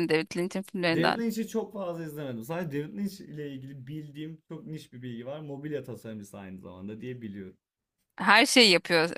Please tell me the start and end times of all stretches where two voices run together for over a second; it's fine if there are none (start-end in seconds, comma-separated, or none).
none